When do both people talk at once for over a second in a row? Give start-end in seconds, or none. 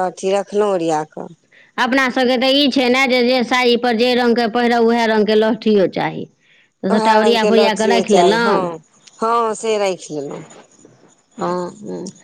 6.9-8.5